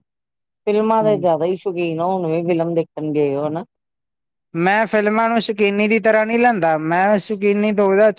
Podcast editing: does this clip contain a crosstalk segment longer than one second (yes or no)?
no